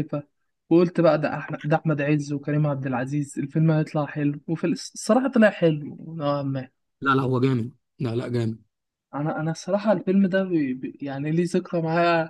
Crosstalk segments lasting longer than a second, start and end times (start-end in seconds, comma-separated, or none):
none